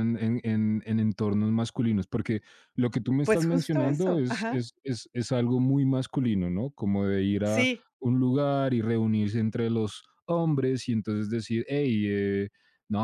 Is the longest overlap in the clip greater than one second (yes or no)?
yes